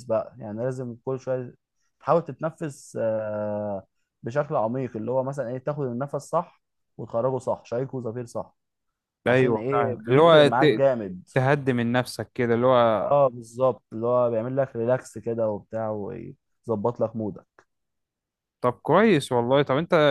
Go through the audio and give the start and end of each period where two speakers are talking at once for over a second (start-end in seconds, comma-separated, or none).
9.3-10.8